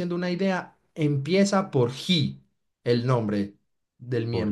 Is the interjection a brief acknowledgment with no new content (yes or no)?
no